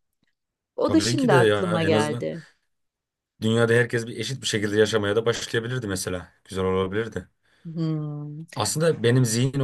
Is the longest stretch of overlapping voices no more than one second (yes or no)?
no